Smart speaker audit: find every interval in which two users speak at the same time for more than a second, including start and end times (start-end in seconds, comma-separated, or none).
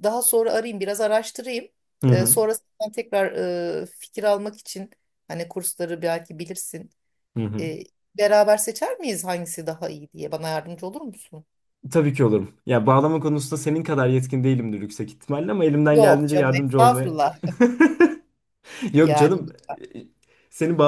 15.9-17.2